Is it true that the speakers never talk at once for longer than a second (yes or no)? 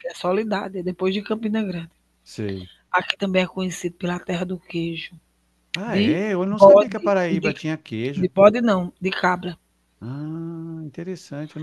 no